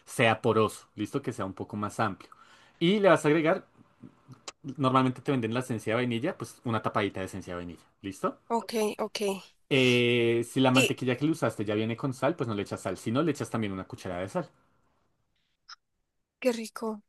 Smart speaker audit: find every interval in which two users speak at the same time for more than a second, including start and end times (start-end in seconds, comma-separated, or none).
none